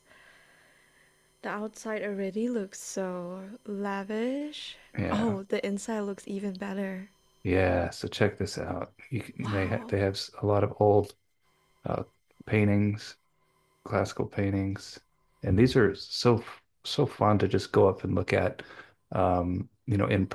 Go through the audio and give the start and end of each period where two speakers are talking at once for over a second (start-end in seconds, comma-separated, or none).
none